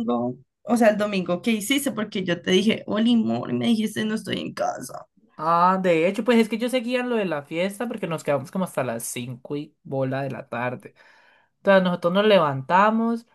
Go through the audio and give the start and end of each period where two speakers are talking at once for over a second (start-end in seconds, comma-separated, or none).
none